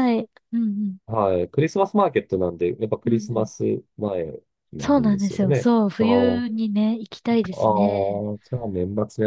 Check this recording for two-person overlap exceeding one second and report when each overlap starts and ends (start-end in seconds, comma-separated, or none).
4.8-6.4